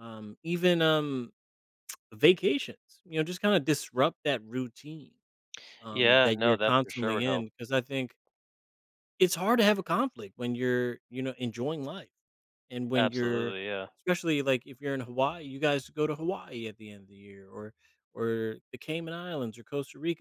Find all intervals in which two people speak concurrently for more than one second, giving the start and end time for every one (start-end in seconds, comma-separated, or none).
5.9-7.5